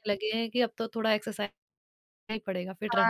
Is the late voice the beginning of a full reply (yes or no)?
yes